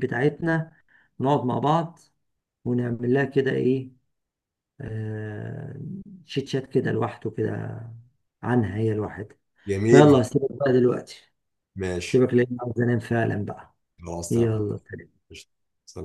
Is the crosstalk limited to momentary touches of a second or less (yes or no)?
yes